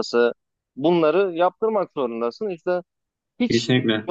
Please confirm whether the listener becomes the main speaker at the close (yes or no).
no